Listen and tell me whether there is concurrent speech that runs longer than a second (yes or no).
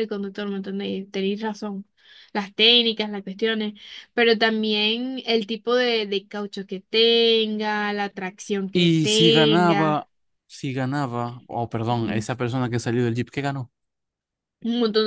yes